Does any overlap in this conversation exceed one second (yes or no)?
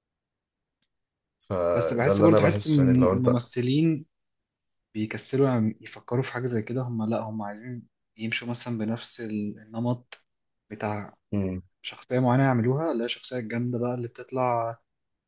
yes